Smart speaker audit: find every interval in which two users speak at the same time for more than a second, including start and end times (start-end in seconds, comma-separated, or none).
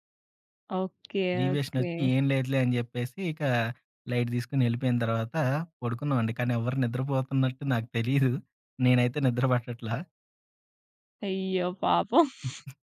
none